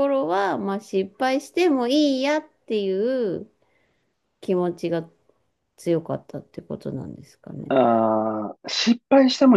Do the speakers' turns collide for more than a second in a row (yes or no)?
no